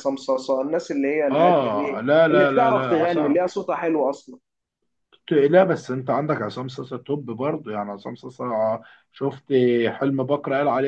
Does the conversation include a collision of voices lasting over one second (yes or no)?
yes